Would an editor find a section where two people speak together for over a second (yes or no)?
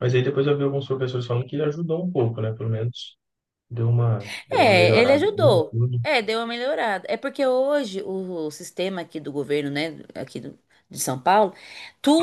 yes